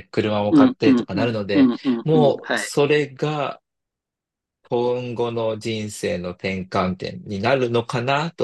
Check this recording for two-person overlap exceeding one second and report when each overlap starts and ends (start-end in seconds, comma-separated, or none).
0.5-2.7